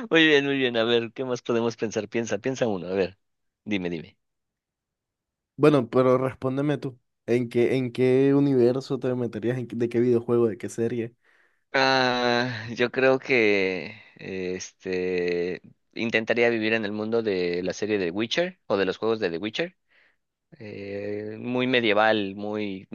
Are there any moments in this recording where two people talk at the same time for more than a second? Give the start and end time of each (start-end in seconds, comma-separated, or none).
none